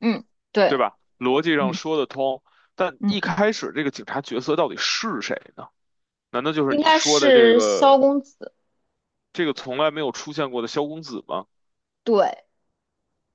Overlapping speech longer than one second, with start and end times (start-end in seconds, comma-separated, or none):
6.7-8.0